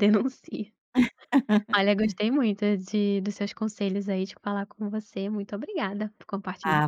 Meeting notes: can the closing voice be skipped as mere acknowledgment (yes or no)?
no